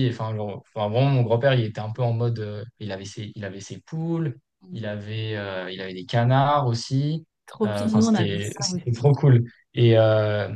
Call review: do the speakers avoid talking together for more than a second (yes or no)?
no